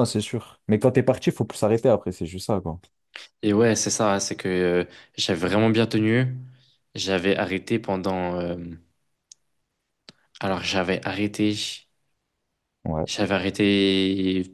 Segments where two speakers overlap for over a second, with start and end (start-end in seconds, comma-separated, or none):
none